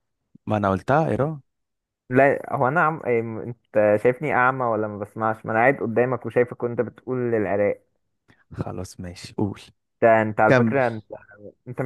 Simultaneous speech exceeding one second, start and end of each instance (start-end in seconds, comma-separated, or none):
none